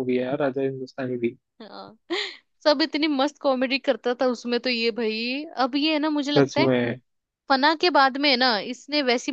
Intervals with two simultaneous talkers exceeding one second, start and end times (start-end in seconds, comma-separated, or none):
none